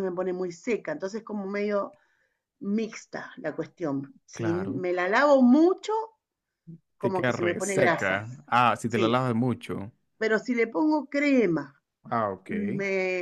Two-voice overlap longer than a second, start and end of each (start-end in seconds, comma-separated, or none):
7.0-8.2